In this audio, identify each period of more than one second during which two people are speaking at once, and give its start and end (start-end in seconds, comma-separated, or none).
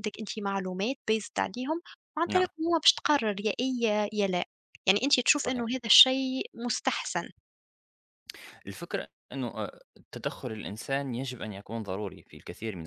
none